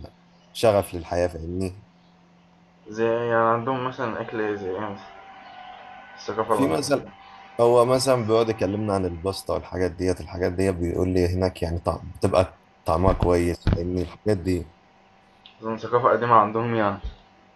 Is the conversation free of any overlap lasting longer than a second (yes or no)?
yes